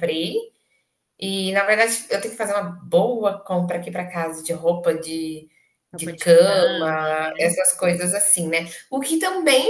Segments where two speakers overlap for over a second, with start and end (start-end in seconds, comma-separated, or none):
5.9-7.5